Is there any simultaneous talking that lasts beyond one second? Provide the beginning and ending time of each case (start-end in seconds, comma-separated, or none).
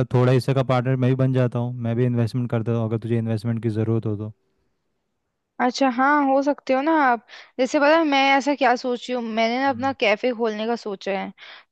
none